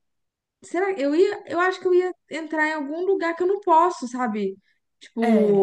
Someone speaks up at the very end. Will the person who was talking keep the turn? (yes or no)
yes